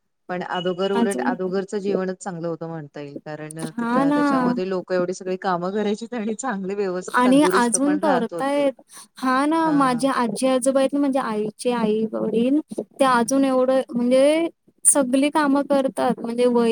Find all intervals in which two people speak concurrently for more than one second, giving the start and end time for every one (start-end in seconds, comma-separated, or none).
7.2-8.7